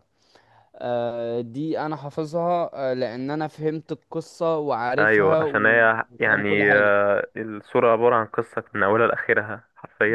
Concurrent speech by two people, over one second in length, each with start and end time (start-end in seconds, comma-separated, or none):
5.0-6.9